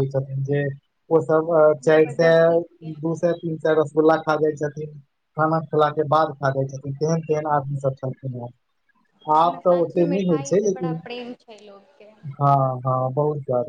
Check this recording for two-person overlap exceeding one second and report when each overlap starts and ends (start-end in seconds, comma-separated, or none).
none